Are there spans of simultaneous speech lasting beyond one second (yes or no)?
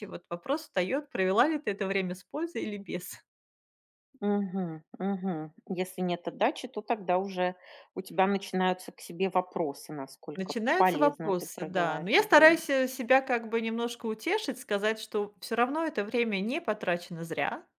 yes